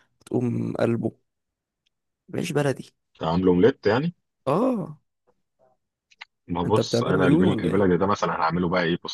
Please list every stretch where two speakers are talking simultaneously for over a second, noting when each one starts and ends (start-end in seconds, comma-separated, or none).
6.6-7.9